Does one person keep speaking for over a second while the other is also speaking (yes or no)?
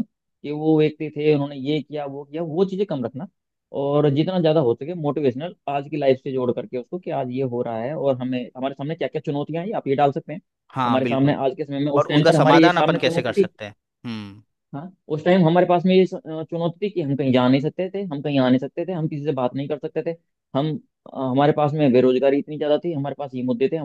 yes